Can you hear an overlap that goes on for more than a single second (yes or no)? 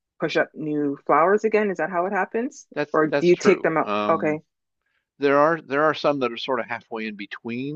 yes